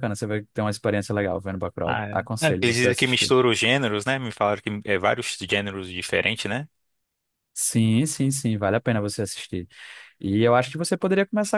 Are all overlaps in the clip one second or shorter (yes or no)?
no